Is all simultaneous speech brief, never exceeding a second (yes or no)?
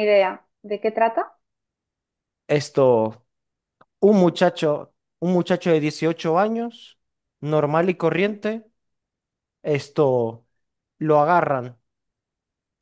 yes